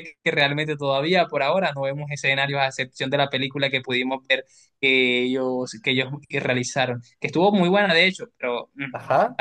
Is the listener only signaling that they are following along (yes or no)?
yes